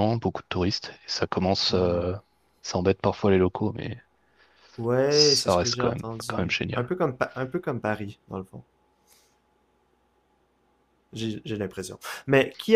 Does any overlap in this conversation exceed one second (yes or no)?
yes